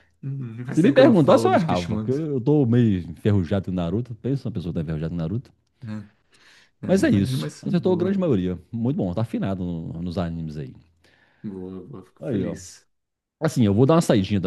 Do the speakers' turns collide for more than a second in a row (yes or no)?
yes